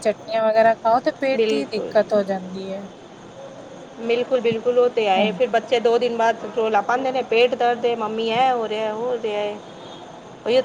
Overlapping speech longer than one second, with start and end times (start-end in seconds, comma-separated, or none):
none